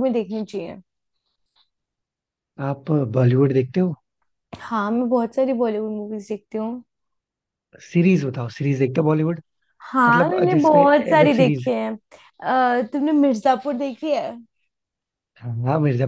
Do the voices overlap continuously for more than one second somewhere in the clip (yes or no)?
yes